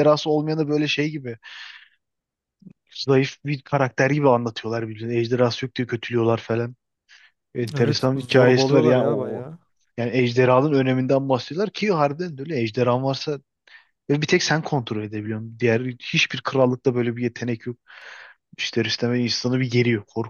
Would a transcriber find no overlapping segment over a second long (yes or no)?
no